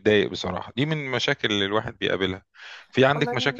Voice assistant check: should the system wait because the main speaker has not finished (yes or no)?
yes